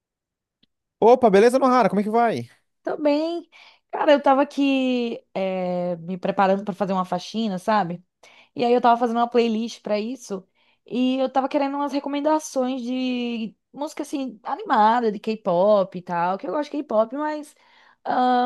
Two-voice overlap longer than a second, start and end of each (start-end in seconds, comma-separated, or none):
none